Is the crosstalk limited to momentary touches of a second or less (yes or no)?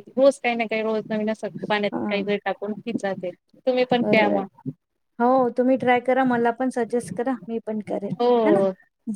yes